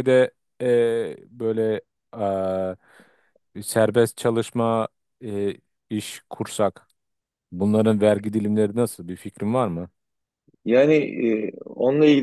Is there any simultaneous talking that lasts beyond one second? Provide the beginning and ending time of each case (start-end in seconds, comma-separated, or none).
none